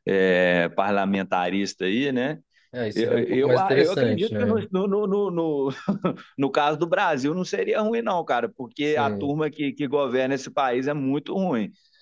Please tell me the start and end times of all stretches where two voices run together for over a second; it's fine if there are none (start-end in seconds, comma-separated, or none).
2.9-4.6